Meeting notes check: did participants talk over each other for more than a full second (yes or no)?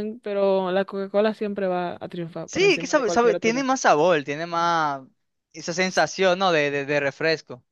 yes